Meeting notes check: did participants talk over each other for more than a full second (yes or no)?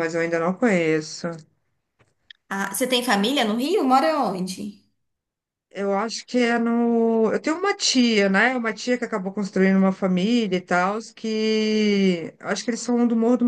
no